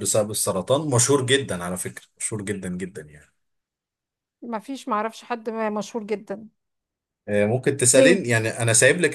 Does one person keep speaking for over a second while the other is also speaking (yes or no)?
no